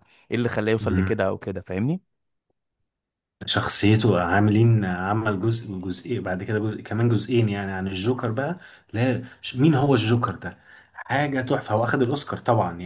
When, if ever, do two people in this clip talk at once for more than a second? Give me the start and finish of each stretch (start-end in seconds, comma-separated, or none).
none